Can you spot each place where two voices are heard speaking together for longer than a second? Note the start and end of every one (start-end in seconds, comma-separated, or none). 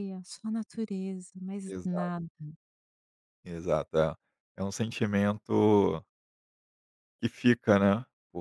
none